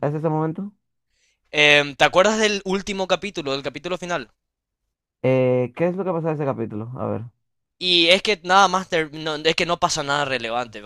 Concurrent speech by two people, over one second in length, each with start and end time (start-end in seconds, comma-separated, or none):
none